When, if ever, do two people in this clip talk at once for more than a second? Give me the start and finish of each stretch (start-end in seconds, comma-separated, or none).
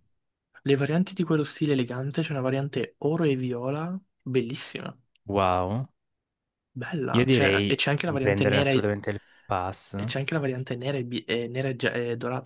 7.1-8.9